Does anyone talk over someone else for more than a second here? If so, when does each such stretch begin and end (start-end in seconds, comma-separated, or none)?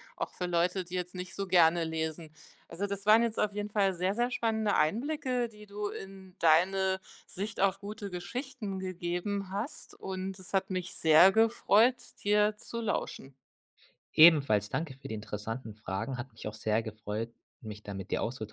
none